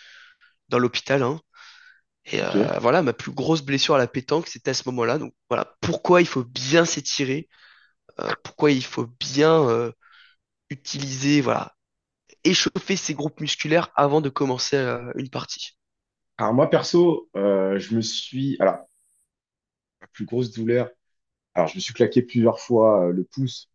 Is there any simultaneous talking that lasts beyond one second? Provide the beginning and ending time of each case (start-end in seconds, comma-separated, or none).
none